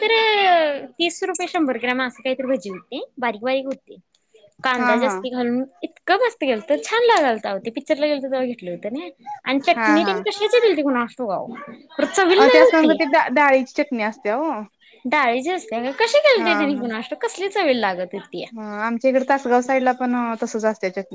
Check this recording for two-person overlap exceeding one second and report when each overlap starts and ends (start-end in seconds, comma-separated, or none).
none